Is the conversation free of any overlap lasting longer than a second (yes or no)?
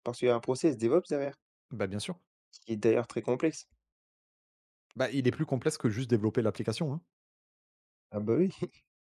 yes